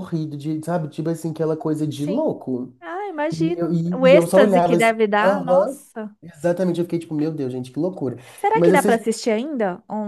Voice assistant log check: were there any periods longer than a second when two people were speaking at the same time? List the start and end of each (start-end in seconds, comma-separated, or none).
3.3-5.8